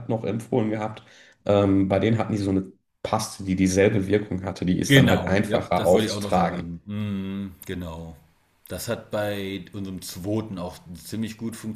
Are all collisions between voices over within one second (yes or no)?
no